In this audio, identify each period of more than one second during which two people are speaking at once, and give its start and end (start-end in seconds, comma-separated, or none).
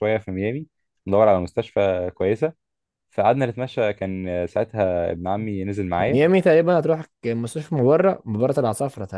none